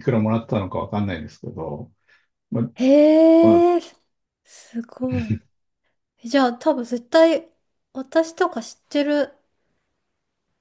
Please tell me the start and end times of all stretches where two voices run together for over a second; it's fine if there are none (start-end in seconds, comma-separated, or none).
none